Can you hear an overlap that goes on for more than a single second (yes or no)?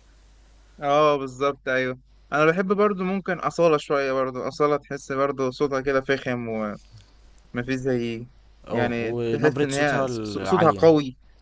yes